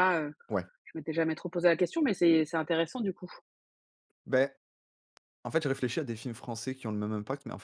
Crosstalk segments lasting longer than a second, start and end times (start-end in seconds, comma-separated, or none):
none